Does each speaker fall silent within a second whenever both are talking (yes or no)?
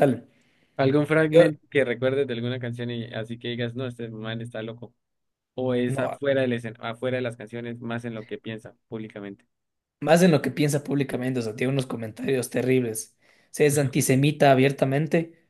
yes